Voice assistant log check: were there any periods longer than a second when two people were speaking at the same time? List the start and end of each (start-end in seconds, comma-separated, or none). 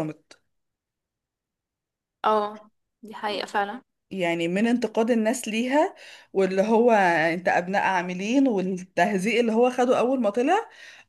none